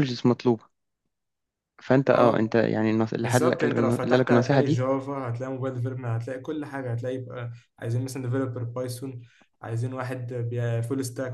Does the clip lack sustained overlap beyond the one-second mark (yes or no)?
no